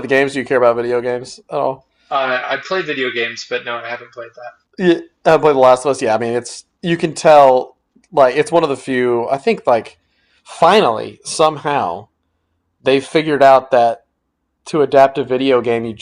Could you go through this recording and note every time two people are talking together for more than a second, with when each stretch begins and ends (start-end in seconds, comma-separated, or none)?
none